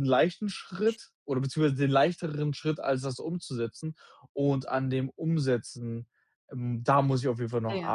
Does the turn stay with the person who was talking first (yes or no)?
yes